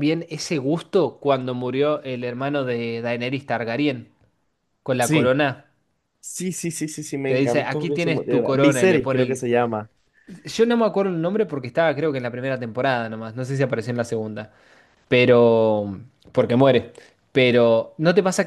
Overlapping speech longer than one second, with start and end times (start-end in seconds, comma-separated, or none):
7.3-9.5